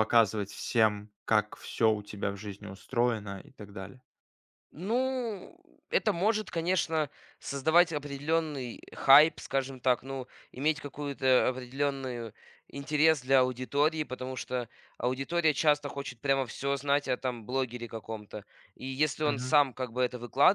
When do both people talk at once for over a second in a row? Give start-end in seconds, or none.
none